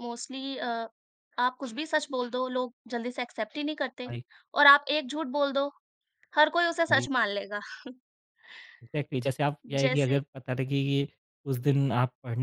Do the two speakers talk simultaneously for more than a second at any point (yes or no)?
no